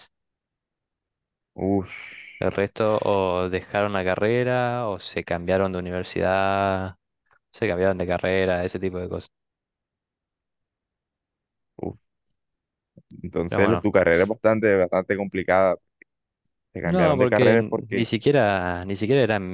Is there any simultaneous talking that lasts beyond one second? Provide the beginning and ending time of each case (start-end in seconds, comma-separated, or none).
16.8-18.1